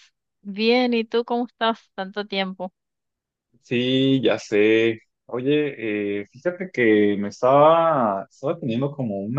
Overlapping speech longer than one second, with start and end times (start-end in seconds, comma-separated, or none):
none